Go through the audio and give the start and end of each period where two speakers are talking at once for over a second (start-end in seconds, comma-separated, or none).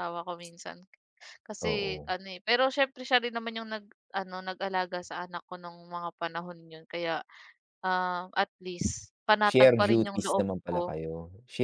9.5-10.9